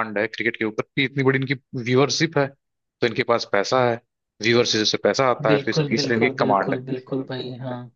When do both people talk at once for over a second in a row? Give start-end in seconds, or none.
5.5-6.8